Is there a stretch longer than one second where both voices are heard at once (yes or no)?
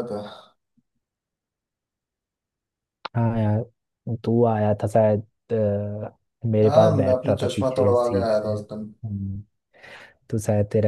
yes